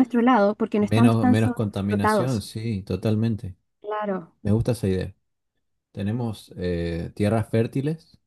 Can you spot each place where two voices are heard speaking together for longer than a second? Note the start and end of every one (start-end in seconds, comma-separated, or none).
0.8-2.5